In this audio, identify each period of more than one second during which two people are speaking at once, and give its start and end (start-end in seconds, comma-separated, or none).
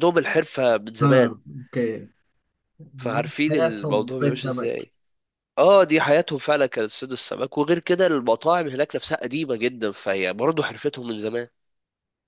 3.0-4.7